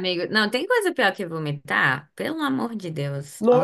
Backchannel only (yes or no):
no